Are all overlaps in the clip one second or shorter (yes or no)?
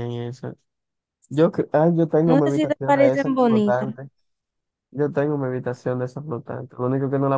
no